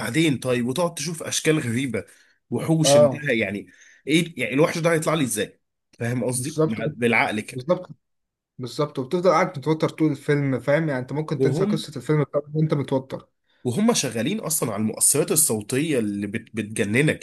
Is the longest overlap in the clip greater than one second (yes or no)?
no